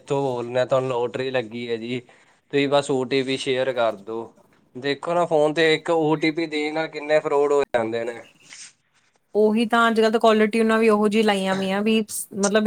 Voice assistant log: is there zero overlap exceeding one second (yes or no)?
yes